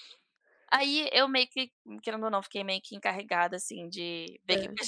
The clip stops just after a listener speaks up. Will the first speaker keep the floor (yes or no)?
yes